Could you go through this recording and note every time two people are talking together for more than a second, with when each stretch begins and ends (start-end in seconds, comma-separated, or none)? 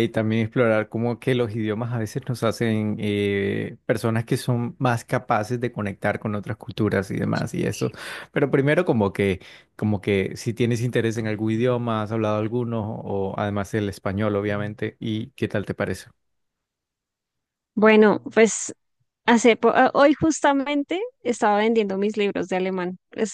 none